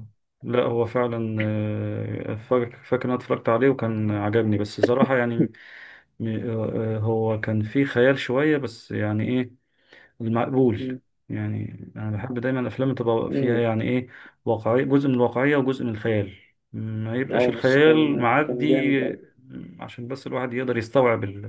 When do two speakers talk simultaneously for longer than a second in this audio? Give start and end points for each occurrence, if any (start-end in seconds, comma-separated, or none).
17.3-19.2